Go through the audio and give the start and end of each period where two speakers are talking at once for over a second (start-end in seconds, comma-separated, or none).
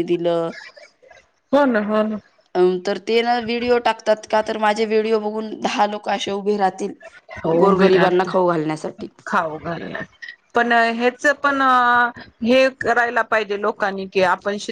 7.6-9.1